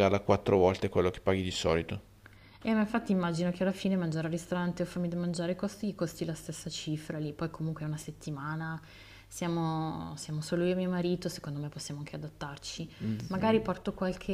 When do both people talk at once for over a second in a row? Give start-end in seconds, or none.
none